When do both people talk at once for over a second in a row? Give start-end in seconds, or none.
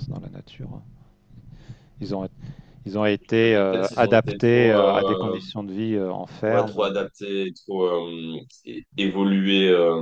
3.2-4.8